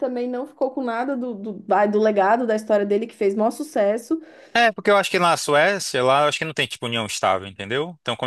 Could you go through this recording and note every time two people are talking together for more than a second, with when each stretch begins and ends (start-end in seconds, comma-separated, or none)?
none